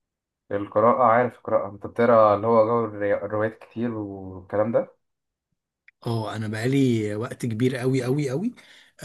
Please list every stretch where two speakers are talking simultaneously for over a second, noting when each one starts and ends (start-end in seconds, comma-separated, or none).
none